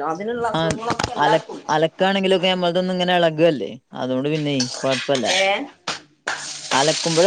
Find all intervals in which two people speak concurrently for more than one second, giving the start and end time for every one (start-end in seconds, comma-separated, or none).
none